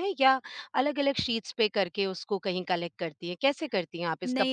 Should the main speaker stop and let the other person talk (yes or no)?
yes